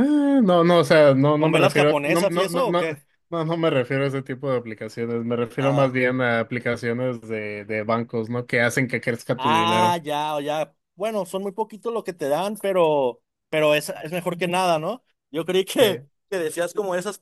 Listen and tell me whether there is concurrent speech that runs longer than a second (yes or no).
yes